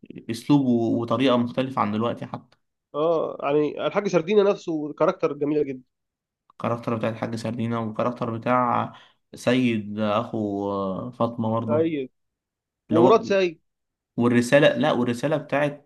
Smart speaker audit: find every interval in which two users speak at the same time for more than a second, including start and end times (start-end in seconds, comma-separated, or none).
none